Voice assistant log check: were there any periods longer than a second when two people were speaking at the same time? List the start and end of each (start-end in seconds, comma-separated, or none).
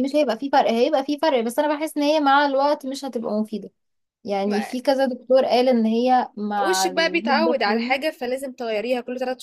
6.7-7.9